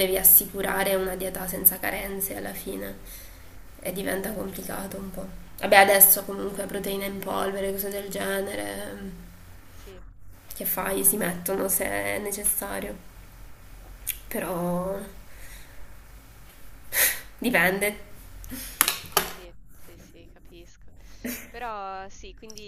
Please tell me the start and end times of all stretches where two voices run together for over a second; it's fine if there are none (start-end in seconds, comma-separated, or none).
none